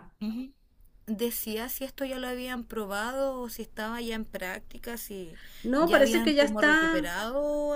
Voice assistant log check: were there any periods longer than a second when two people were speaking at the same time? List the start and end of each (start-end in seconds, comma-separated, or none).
5.8-7.1